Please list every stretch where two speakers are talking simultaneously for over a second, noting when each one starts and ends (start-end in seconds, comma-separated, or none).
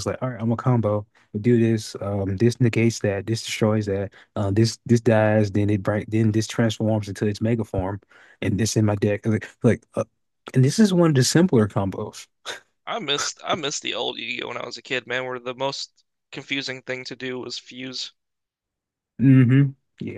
none